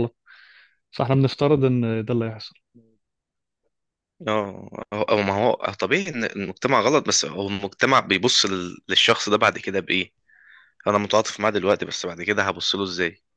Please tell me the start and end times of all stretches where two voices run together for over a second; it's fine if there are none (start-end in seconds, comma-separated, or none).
none